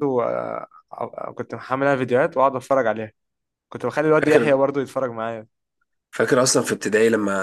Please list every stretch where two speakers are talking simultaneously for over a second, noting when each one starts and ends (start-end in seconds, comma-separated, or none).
none